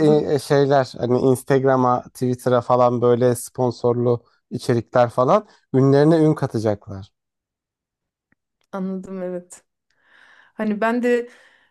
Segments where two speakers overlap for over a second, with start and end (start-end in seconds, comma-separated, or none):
none